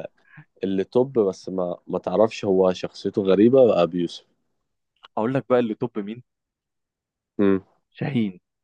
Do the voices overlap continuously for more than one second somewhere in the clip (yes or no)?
no